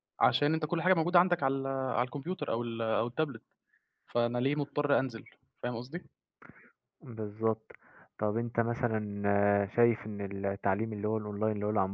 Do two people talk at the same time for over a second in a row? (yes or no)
no